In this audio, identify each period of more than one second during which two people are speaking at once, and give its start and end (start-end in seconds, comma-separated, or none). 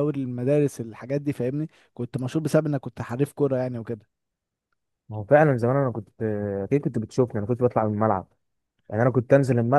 none